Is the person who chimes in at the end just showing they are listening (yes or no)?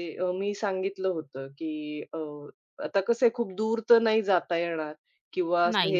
yes